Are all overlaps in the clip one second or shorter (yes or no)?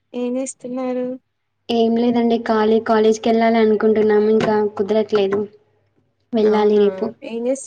yes